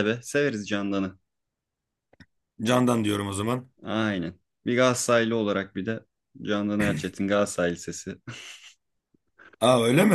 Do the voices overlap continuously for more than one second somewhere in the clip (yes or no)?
no